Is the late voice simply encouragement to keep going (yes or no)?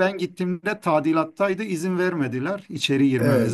no